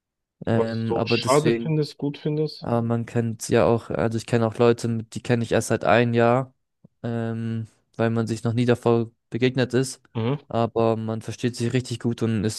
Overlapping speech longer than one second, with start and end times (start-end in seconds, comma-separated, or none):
0.5-1.8